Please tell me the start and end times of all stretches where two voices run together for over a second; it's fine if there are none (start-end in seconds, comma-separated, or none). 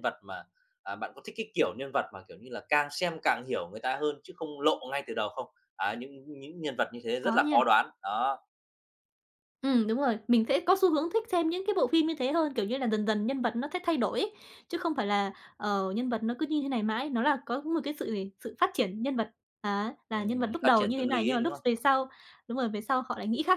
20.1-21.6